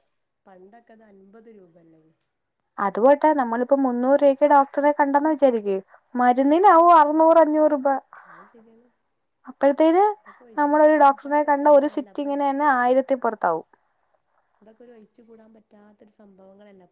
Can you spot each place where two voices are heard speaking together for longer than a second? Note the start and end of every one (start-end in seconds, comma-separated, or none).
10.6-12.3